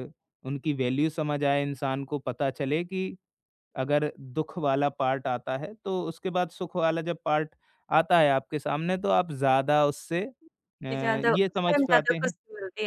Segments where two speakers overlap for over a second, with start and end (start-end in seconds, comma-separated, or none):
10.9-12.3